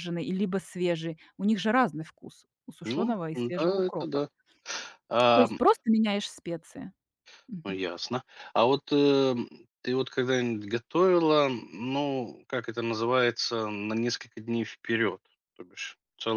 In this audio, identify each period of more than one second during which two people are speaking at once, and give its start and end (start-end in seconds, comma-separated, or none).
2.8-4.2